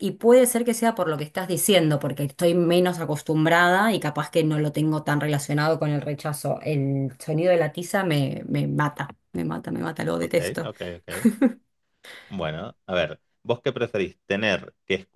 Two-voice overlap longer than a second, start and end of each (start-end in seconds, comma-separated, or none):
none